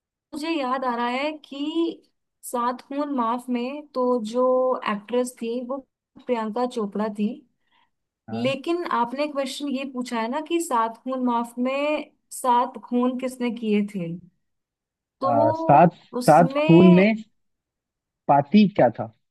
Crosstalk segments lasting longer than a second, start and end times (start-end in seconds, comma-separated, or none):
15.2-17.1